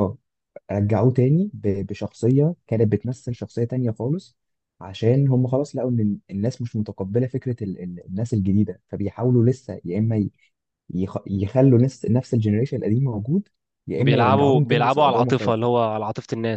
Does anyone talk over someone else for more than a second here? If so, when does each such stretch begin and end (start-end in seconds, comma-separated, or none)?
14.0-15.7